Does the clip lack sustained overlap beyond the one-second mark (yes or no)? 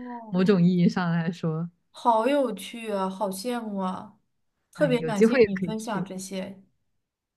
no